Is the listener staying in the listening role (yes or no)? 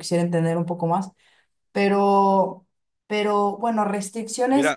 no